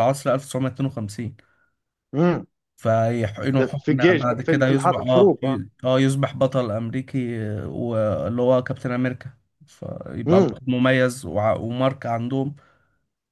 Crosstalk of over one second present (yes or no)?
yes